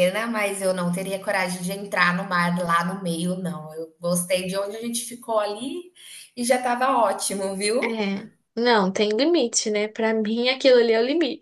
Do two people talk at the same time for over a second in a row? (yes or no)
no